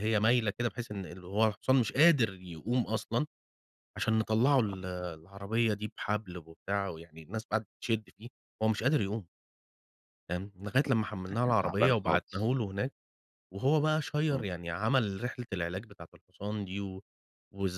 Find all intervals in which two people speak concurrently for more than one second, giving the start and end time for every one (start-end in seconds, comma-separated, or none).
10.9-12.5